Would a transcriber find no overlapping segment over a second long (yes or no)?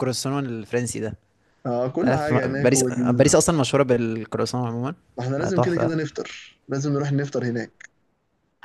no